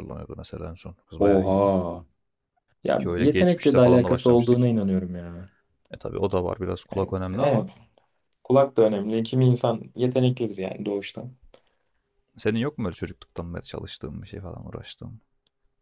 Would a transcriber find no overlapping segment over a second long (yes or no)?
no